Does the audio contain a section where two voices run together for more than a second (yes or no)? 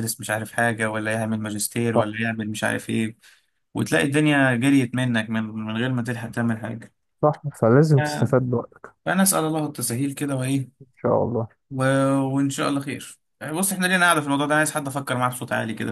no